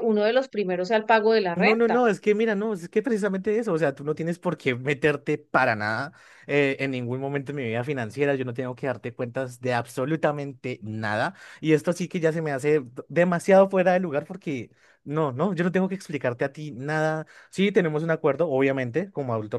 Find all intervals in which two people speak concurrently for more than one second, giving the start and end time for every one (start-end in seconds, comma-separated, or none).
none